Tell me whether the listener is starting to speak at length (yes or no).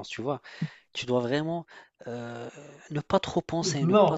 yes